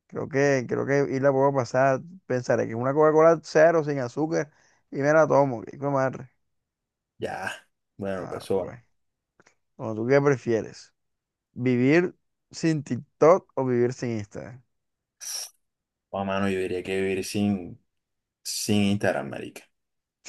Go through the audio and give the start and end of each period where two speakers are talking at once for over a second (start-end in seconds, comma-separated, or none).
none